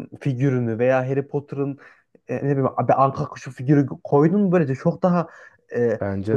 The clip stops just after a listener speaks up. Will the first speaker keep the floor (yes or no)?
yes